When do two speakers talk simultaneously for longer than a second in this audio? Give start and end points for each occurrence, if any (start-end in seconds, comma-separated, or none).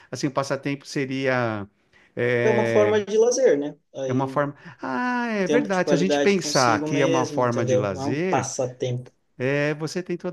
5.4-8.5